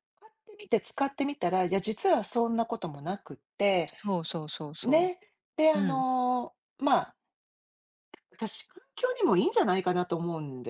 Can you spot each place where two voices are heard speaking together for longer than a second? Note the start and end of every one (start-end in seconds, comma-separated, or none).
none